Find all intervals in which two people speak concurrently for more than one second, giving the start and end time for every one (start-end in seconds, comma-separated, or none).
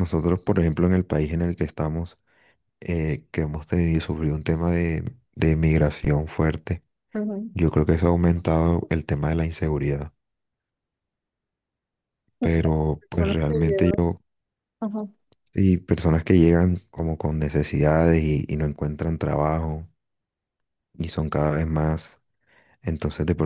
12.4-14.0